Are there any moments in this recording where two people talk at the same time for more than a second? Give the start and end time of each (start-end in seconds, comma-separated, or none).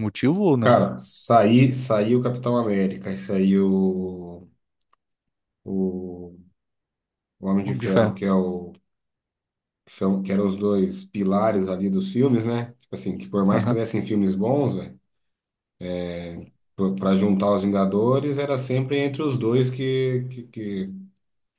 none